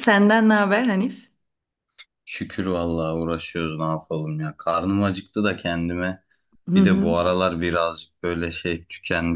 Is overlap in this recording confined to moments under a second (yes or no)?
yes